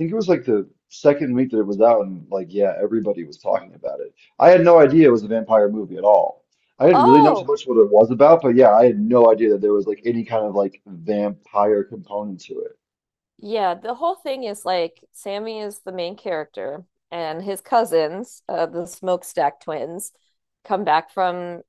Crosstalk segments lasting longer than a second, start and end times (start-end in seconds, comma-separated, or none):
none